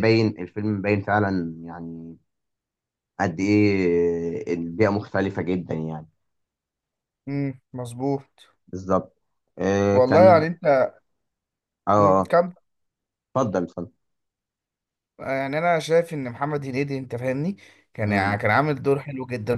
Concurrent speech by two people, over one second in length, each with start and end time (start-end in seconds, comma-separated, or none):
none